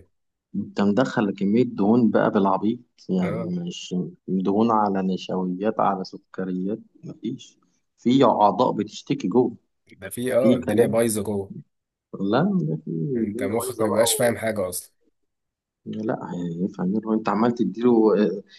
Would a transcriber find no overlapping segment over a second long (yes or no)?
no